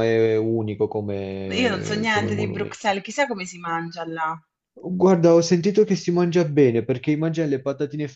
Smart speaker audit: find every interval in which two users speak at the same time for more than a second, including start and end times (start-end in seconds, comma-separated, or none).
1.6-2.9